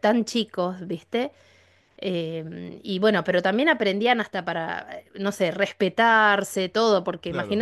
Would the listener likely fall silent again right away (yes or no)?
yes